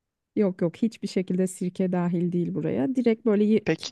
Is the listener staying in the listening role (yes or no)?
yes